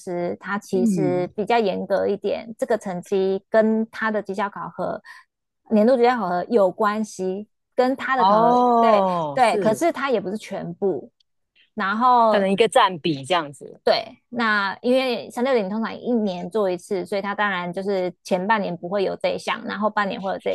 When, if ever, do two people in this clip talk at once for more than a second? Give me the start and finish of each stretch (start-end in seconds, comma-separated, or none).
8.2-9.8